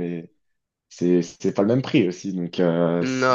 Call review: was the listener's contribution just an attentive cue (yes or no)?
no